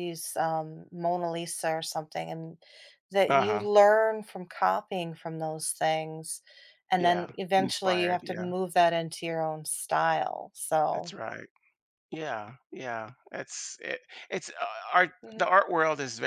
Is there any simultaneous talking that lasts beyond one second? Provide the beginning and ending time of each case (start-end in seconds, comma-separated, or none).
7.0-8.5